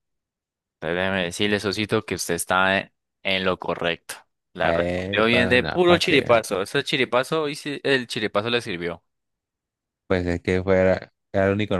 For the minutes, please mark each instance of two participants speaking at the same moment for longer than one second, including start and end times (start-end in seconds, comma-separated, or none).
4.6-6.4